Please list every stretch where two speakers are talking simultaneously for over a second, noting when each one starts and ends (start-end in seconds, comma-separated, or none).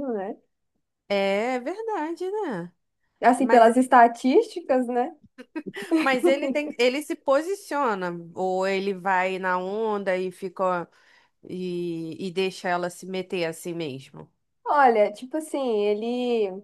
none